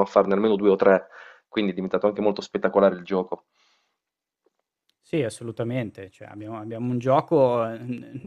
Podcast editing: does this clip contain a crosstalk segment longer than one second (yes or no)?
no